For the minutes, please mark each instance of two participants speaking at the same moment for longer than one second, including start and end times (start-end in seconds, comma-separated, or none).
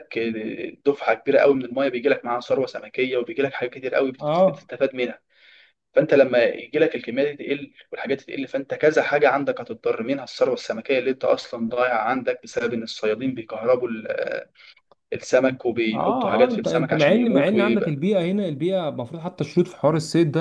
15.9-18.0